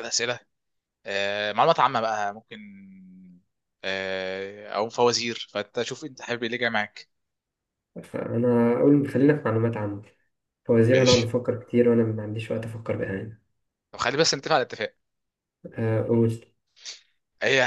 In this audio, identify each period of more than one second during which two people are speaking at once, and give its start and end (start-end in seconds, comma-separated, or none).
none